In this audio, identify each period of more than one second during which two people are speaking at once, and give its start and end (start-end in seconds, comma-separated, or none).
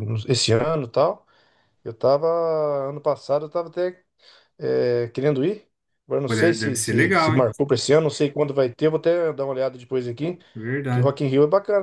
6.2-7.5